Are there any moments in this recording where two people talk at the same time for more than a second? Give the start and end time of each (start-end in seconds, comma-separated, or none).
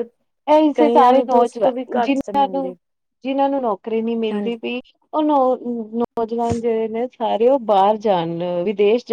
0.7-2.7